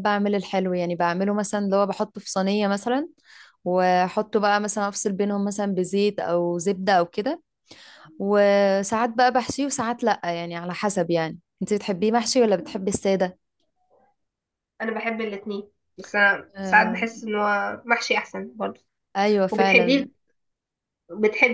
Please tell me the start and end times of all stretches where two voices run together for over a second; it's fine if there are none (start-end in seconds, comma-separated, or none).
none